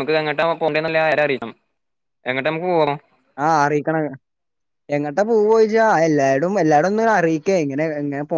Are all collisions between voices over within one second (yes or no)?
yes